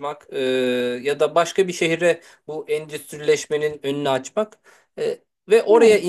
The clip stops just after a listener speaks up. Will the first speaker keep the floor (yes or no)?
yes